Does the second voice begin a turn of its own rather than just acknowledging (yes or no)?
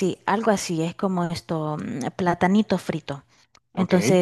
no